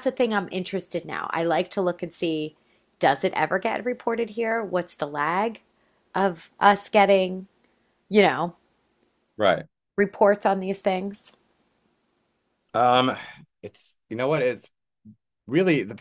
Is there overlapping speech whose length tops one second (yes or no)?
no